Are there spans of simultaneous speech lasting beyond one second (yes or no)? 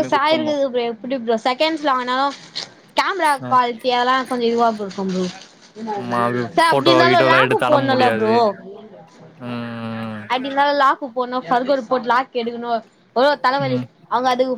yes